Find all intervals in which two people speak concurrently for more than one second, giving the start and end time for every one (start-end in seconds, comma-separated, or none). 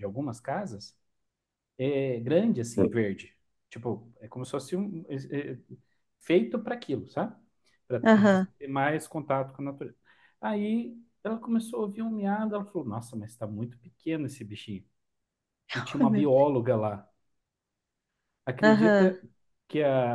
none